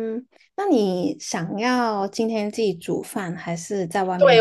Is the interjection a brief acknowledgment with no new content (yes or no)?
no